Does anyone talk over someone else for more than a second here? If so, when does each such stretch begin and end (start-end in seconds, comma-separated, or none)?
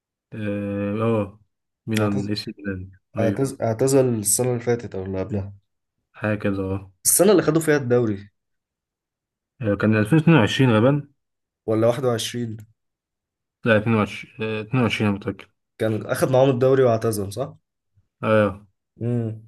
none